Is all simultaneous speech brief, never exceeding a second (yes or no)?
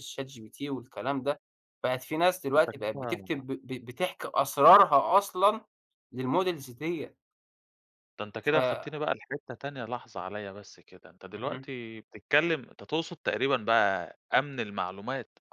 yes